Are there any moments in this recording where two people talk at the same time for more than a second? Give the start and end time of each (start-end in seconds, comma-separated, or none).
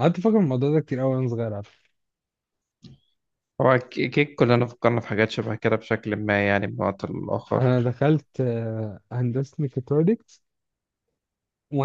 none